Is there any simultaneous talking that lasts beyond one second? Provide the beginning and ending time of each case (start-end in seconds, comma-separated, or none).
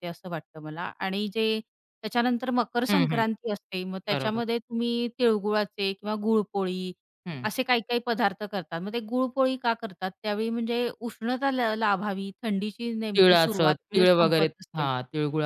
13.2-14.8